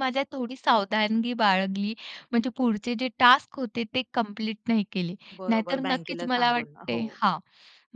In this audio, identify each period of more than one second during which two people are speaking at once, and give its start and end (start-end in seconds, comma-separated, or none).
5.3-7.2